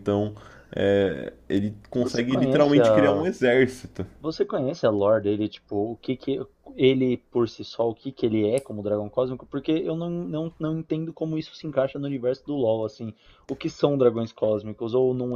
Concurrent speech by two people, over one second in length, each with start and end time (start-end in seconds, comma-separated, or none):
2.0-3.3